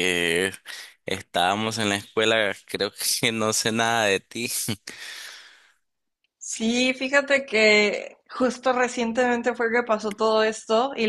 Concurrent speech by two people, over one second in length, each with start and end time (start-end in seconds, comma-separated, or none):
none